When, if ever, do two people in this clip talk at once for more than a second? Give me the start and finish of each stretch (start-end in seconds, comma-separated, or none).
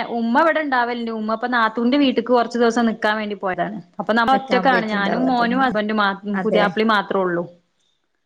4.3-5.7